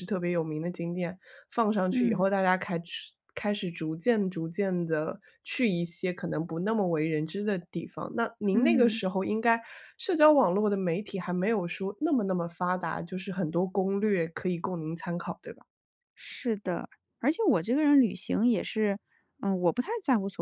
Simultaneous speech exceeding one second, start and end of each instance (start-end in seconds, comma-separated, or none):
none